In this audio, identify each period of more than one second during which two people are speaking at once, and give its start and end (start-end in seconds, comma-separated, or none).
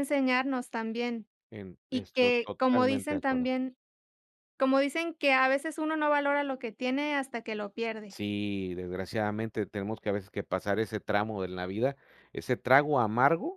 1.9-3.5